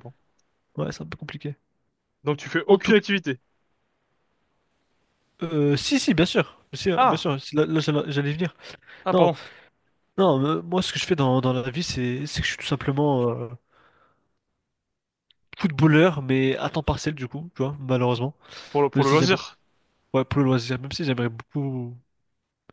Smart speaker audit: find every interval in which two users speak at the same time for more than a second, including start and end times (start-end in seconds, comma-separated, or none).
none